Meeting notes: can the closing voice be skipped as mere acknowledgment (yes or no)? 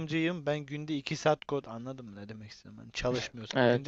yes